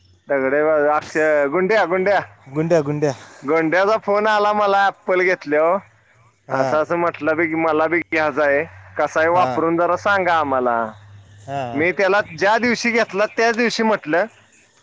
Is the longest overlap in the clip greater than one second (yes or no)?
no